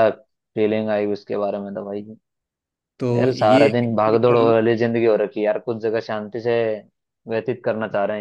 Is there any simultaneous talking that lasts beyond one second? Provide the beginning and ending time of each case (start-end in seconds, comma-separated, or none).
3.1-4.5